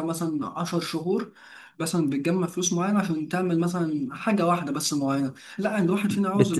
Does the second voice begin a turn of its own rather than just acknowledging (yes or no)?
yes